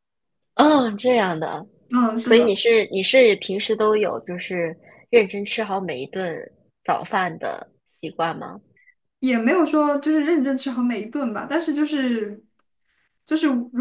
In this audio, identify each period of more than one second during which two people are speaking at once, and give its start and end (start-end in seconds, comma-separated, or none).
none